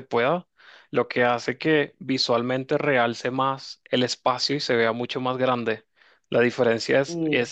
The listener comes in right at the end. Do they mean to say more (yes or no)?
no